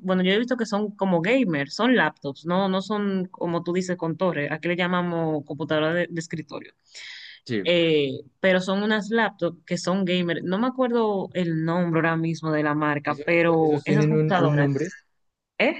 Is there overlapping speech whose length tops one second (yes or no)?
yes